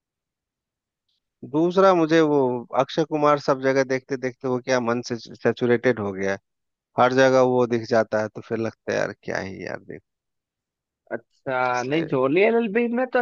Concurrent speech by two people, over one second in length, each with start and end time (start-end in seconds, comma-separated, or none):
none